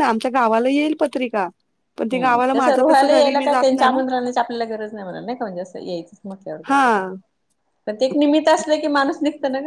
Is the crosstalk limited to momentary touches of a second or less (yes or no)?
no